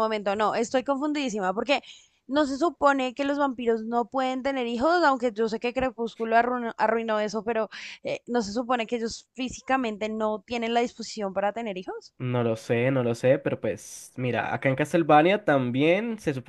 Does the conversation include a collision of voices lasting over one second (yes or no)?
no